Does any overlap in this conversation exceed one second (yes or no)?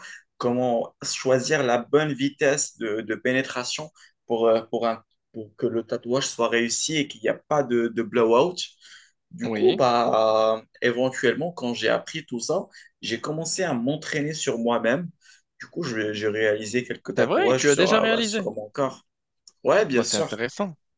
yes